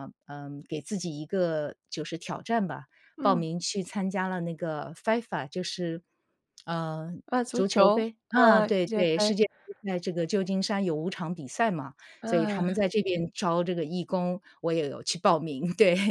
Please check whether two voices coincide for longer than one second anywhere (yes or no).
yes